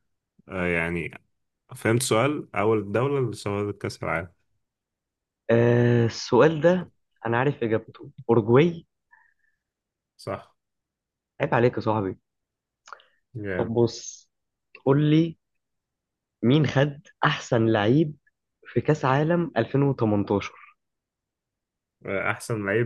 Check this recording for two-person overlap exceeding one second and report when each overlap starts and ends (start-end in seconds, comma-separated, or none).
none